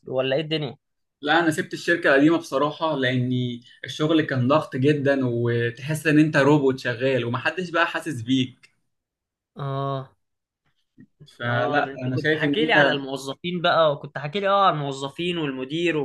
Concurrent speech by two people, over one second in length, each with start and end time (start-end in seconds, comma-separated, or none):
11.4-12.9